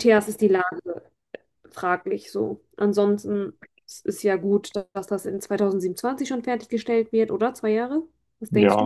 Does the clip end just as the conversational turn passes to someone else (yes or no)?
yes